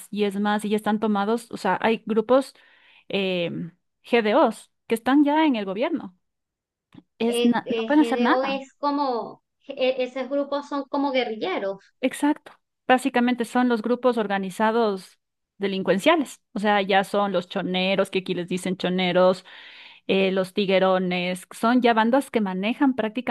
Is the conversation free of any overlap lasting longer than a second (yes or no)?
no